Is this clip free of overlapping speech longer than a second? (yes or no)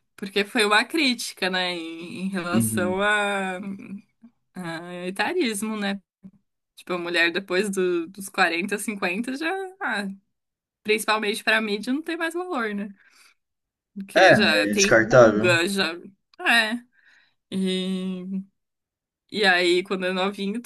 no